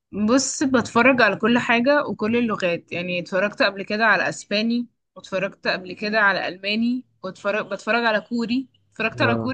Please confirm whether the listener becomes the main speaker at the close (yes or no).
yes